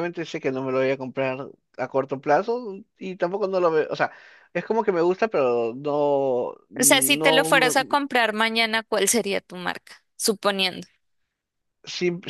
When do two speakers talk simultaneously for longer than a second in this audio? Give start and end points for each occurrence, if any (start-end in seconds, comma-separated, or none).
6.8-8.0